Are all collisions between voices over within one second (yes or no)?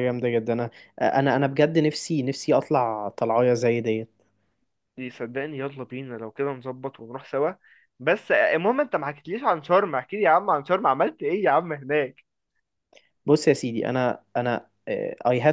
yes